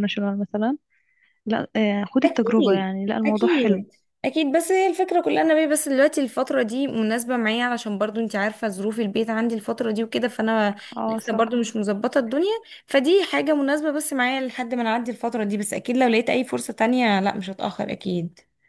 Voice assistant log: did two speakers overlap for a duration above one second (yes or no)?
yes